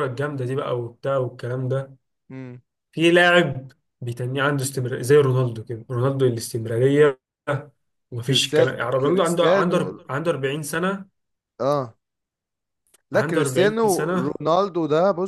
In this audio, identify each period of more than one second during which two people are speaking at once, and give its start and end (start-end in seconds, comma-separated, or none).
8.3-9.8, 13.1-14.4